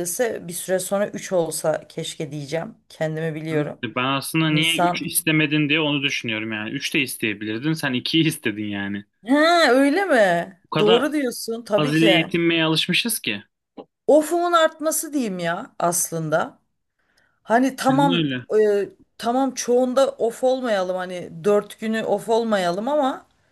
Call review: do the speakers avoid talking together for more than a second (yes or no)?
yes